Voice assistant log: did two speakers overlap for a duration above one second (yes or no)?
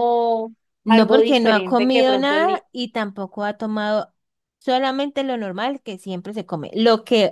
yes